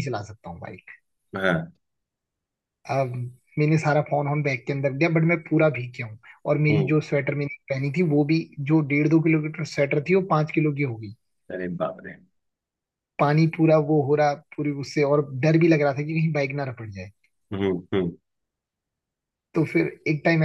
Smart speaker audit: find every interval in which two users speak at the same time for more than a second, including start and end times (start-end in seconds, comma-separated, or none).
none